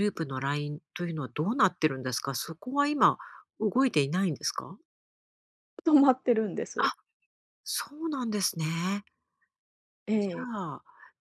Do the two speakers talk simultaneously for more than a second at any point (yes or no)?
no